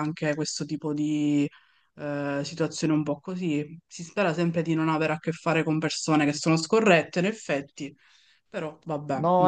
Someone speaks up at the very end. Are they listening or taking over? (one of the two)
taking over